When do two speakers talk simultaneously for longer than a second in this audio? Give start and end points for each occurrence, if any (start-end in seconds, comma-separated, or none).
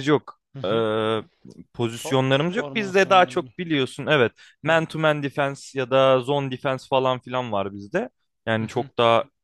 1.9-3.5